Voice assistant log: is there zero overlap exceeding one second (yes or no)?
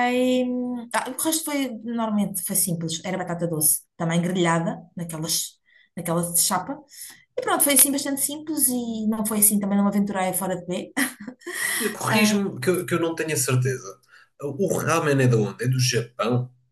yes